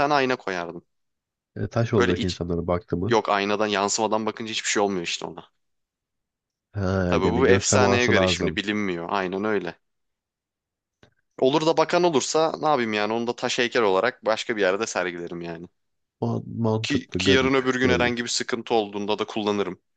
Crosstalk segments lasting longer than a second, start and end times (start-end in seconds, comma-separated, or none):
7.1-8.6, 16.8-18.1